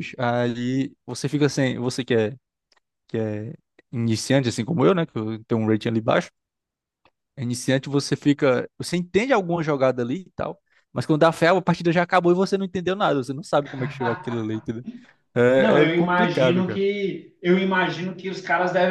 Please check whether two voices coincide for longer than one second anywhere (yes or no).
yes